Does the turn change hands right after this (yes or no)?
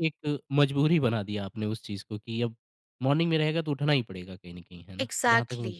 yes